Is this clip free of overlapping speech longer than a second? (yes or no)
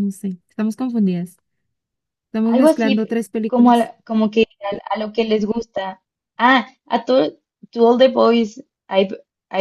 no